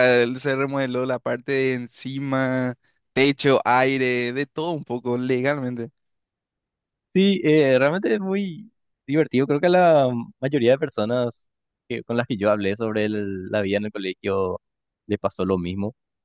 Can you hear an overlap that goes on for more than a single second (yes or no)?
no